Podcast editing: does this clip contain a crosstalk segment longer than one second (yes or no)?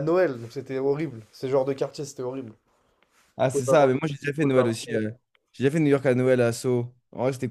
yes